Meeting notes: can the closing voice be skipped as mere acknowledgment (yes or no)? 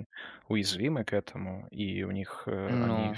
yes